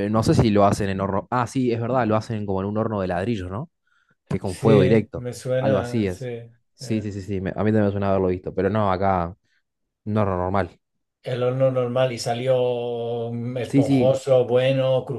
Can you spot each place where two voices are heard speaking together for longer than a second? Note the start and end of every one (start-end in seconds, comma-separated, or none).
4.4-6.3